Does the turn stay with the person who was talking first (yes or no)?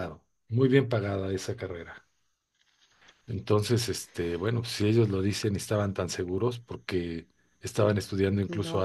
yes